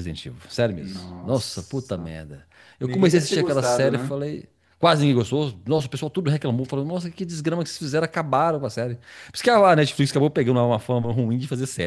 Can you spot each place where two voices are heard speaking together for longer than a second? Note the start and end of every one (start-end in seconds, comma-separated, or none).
0.8-2.1, 2.8-4.1